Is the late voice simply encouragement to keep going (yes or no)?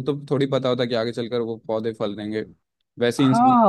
no